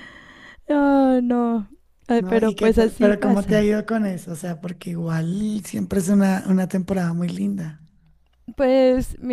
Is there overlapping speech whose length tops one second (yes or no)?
yes